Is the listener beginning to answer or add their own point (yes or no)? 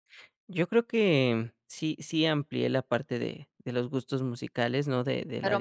yes